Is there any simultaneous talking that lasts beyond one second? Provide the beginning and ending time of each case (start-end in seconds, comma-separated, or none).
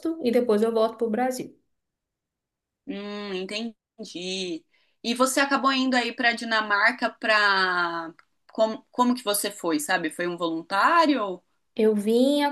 none